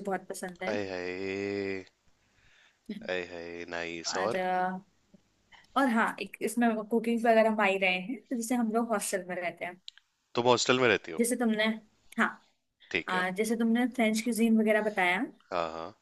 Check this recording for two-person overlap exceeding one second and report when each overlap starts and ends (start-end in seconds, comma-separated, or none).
none